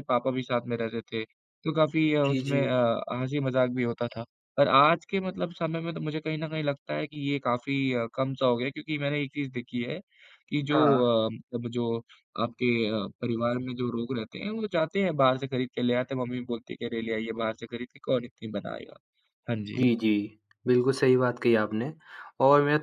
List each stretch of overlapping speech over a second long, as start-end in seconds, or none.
none